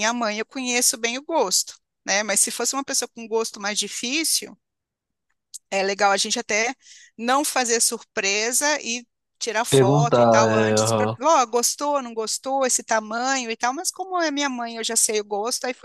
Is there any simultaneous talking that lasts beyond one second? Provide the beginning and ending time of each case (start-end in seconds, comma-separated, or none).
9.7-11.2